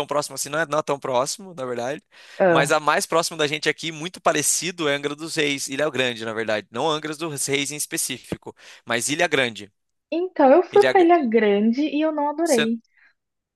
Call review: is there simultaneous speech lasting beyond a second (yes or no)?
no